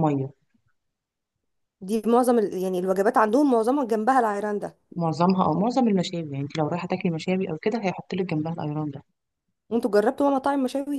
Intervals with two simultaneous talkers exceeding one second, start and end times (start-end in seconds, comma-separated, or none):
none